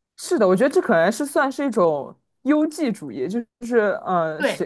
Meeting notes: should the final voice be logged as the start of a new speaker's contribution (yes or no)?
no